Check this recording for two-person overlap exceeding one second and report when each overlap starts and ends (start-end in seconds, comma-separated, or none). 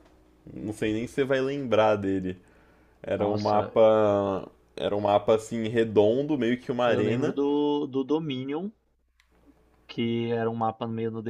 none